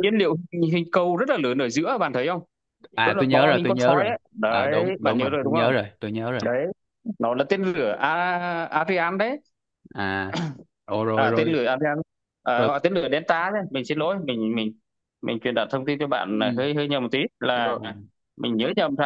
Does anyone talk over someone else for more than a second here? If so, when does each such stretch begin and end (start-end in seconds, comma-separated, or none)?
3.0-5.7